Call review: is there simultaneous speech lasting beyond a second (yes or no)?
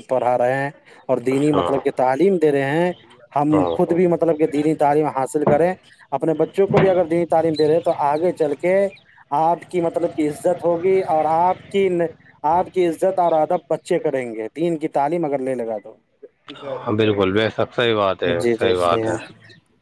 no